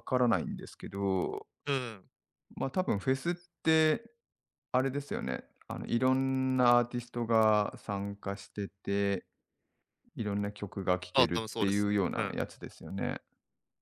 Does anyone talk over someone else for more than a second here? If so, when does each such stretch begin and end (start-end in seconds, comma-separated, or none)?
11.1-12.4